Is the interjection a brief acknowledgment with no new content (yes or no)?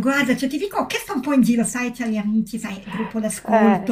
yes